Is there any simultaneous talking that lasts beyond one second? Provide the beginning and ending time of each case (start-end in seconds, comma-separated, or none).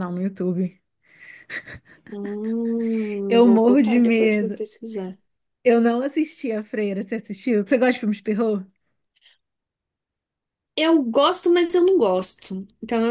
3.3-4.6